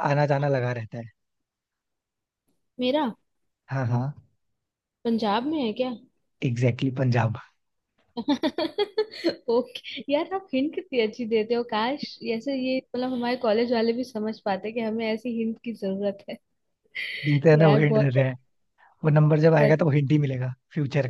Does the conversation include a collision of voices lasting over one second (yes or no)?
no